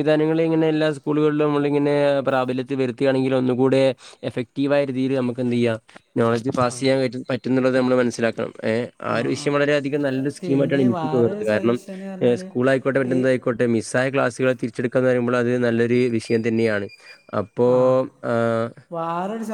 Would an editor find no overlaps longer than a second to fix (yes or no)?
no